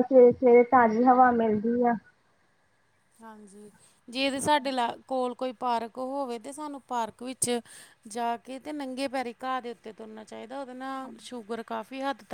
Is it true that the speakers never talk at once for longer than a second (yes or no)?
yes